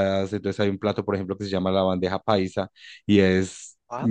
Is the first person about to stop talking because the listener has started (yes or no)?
no